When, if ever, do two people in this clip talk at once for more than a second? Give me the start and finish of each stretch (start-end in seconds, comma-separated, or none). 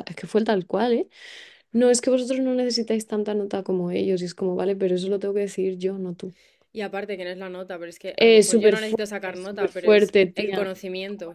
8.2-10.7